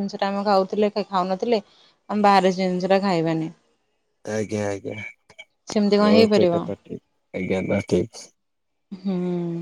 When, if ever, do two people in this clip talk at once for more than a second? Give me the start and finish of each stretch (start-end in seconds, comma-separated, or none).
none